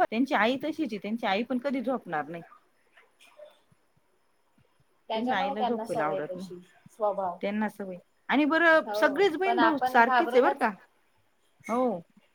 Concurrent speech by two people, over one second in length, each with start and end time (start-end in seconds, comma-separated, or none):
5.1-6.5, 8.9-10.6